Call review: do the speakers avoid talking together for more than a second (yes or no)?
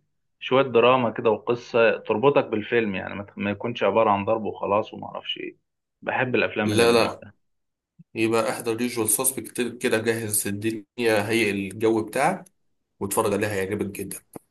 yes